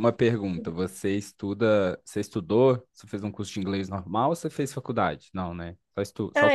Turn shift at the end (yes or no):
yes